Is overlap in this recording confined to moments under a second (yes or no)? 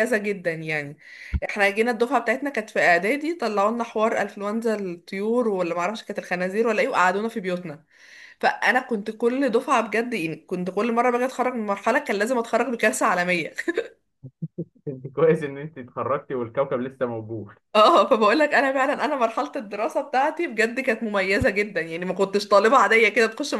yes